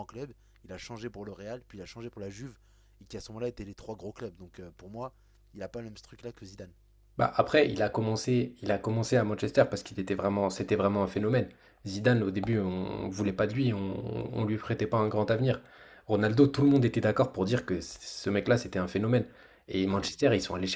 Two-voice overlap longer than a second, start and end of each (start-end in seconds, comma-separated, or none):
none